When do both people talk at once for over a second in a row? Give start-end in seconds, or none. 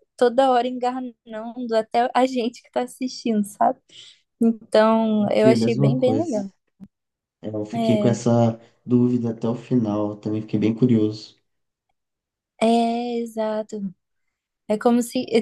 5.2-6.4